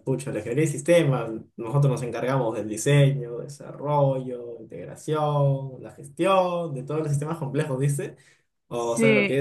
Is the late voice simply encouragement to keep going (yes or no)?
yes